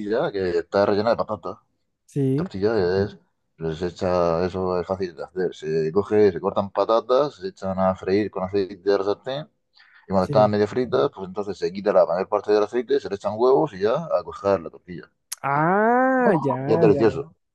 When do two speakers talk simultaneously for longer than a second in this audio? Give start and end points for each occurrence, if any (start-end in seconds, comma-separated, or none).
none